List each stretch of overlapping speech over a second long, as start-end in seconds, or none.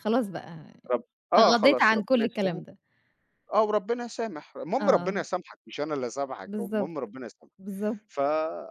1.3-2.6